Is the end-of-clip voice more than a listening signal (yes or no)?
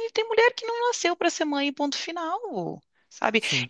no